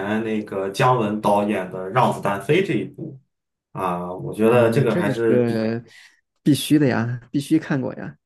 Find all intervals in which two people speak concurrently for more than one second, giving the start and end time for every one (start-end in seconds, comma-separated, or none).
4.4-5.7